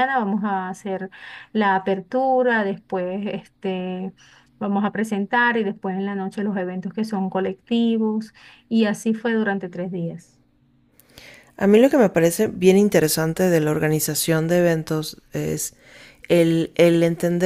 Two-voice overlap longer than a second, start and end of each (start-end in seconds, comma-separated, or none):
none